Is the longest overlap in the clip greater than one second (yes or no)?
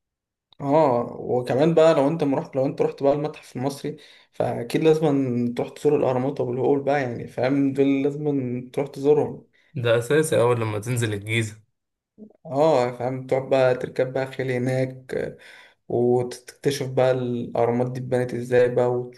no